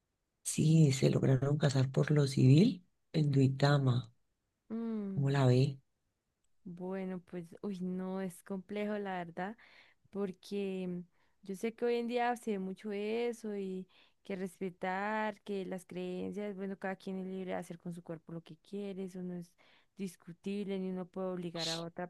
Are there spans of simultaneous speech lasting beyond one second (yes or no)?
no